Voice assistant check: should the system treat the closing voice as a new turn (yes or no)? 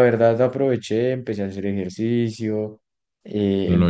no